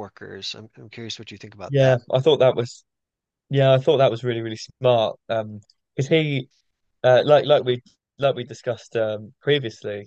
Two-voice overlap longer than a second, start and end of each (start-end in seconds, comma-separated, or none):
none